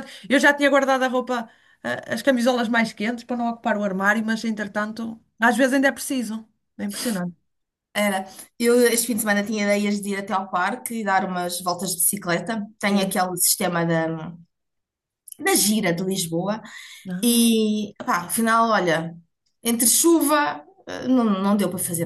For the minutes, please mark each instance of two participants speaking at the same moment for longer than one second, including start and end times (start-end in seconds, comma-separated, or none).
none